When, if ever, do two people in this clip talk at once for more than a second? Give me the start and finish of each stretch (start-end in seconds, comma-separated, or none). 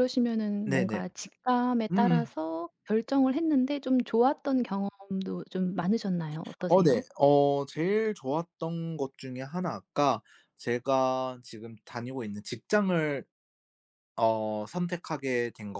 none